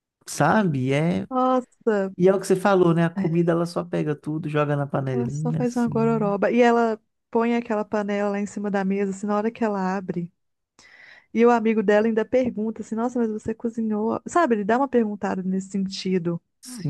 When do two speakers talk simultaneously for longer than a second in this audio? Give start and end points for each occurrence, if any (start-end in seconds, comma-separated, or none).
5.1-6.4